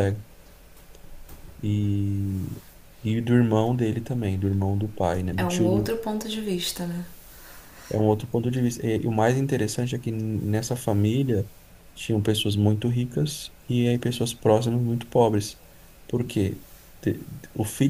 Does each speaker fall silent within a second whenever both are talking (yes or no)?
yes